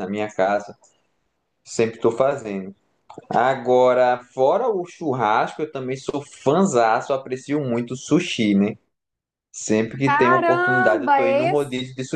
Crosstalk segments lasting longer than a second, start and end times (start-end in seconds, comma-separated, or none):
10.0-11.5